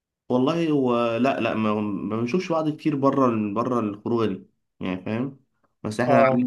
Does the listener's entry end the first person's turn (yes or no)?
no